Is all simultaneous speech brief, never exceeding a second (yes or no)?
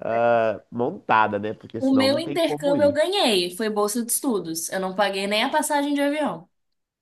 no